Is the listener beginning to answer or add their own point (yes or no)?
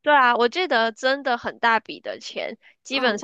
no